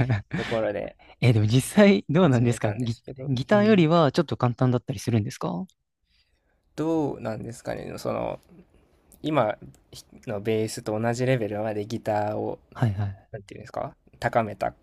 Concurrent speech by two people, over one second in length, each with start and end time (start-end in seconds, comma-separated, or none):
2.2-3.9